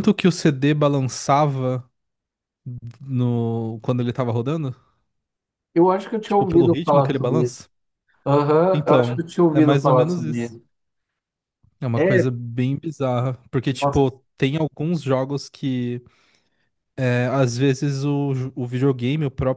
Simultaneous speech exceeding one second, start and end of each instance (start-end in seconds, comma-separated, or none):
6.2-7.6, 8.7-10.6